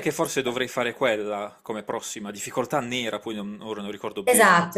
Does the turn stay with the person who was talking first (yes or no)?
no